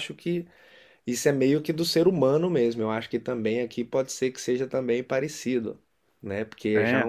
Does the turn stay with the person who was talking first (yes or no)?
yes